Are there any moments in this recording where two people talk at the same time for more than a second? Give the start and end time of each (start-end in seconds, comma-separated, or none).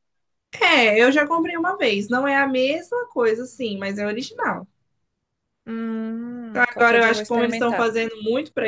6.5-7.9